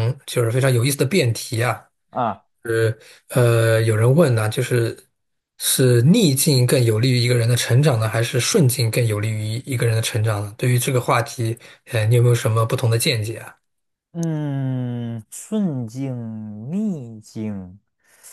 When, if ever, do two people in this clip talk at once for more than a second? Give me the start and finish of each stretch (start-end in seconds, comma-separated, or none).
none